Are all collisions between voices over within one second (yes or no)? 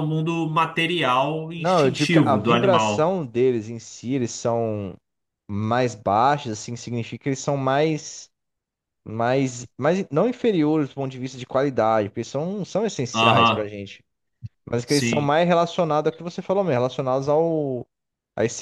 no